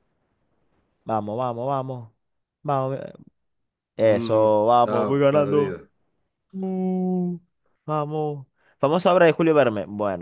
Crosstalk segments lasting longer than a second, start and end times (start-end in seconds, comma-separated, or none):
4.0-5.8